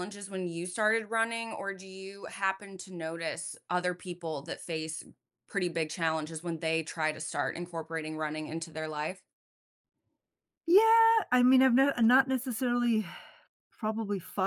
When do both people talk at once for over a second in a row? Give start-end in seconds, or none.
none